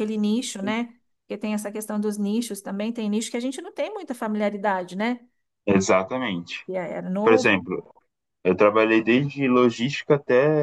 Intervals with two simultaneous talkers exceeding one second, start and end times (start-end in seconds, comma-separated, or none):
none